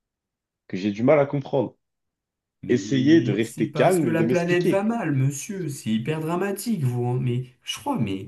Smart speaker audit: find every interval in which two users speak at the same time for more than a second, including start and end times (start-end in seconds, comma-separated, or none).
2.7-4.8